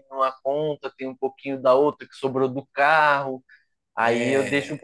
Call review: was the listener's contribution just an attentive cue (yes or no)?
yes